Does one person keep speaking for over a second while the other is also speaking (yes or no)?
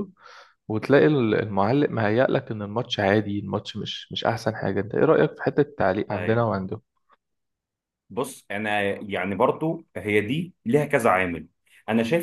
no